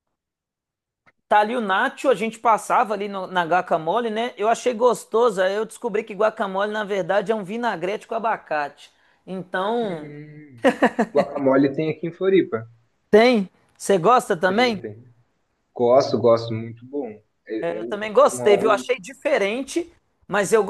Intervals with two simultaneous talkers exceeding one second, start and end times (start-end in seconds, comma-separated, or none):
17.6-18.9